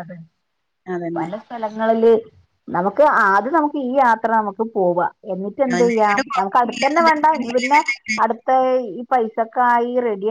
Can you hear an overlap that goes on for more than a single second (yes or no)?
yes